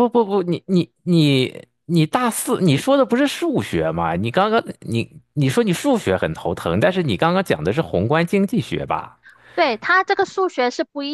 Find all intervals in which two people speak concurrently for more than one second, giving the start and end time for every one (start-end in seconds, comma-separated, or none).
none